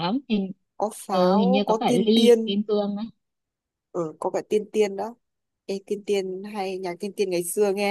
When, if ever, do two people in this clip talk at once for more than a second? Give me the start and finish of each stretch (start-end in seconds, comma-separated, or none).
1.1-2.6